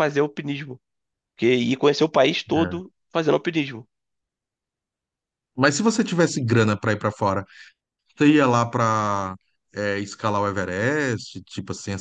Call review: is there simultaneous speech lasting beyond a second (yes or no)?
no